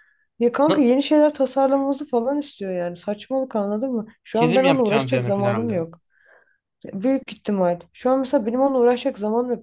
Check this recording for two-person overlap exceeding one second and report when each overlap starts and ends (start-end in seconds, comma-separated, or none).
4.3-5.8